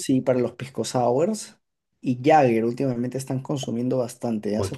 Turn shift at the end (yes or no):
yes